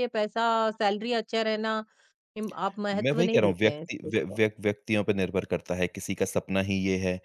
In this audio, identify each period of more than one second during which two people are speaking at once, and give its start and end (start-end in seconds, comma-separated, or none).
2.9-4.4